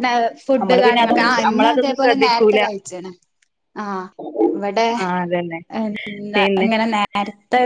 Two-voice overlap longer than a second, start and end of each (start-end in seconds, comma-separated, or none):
0.6-2.6